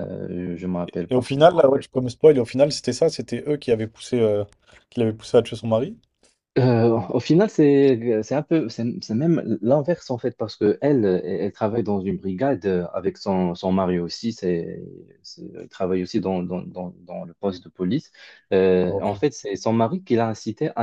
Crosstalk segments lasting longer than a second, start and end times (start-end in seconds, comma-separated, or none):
none